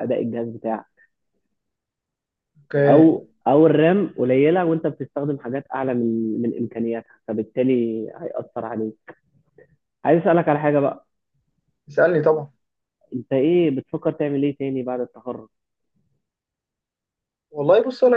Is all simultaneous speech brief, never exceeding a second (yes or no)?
yes